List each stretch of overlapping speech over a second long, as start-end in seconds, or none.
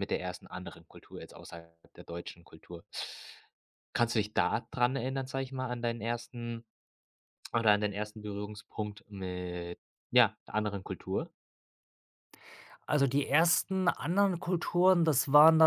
none